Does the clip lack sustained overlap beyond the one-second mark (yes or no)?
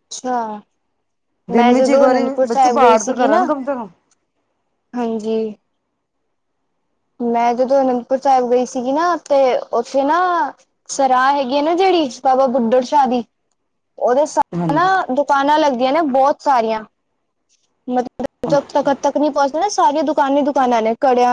no